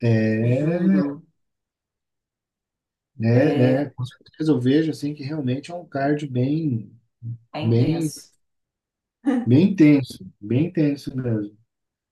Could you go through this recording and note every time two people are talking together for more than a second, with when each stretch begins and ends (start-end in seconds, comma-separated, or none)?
none